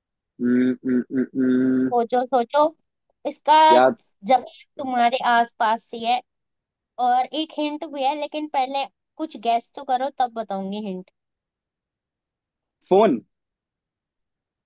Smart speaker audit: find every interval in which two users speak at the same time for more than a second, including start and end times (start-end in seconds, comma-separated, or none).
none